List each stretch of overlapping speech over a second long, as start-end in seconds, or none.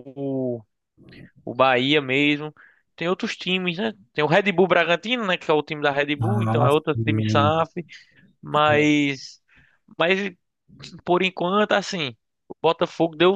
6.2-7.7